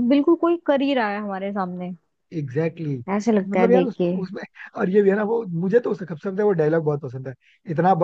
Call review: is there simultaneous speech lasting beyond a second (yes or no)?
no